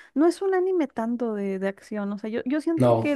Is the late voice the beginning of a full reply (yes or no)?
no